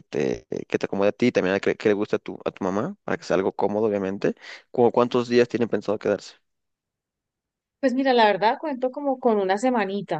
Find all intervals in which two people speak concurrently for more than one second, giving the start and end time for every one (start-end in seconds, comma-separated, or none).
none